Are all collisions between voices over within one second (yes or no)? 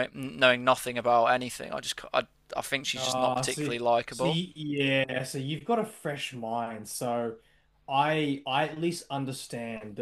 no